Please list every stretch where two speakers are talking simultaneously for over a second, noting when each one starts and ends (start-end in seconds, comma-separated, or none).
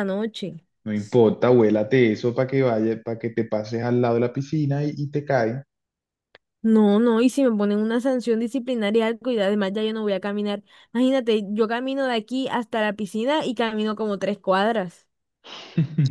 none